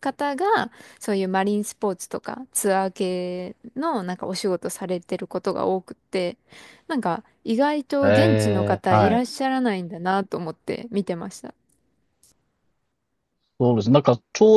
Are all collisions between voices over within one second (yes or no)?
no